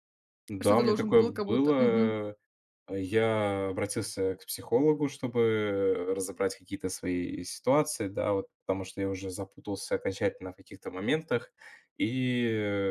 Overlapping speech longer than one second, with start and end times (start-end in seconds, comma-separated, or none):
0.6-2.2